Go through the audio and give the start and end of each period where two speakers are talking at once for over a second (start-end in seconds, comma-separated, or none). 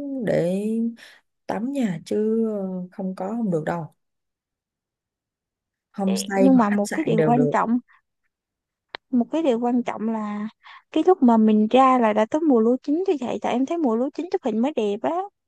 6.1-7.5